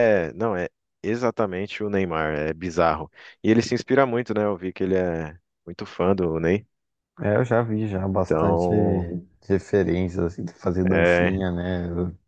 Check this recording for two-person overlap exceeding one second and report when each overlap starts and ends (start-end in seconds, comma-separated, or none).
none